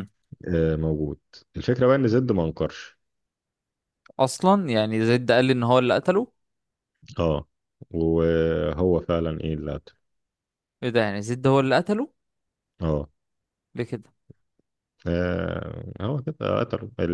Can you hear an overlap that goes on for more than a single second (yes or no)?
no